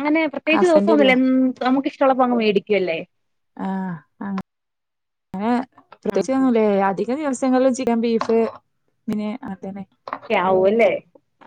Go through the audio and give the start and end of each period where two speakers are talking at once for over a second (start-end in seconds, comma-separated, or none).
none